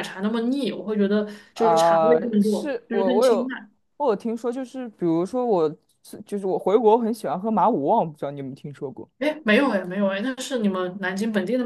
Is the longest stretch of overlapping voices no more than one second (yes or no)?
no